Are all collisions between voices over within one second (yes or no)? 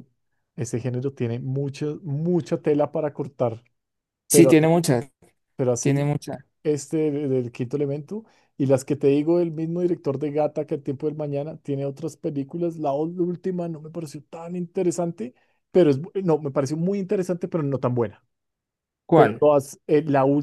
yes